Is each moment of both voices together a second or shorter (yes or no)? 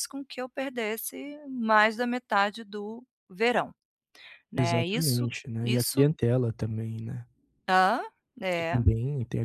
no